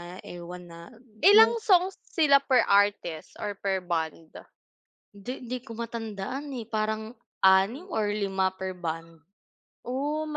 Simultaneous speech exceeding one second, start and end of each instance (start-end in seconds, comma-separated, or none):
none